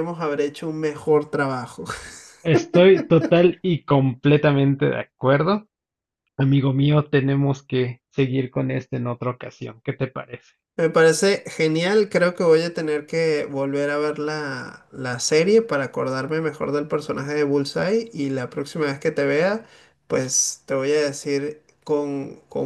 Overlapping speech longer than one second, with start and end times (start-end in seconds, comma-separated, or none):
none